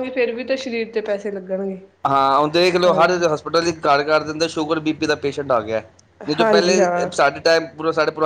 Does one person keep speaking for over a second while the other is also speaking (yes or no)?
no